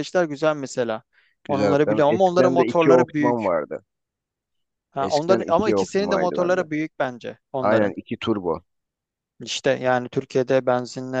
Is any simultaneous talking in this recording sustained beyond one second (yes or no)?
yes